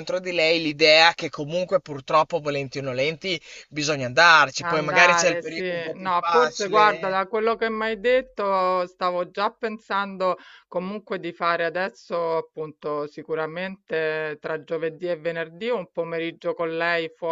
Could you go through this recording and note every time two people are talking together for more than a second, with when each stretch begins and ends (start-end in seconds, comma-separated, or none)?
4.6-7.2